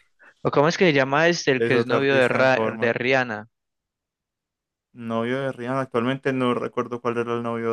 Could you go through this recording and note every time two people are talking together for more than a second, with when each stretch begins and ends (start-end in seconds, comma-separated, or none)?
1.6-3.0